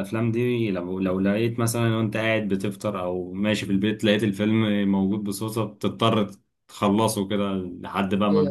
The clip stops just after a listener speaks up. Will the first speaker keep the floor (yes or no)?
no